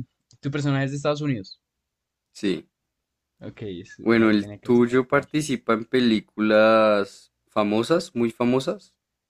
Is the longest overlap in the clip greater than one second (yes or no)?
yes